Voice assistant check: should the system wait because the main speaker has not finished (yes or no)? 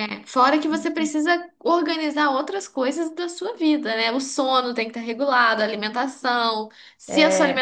yes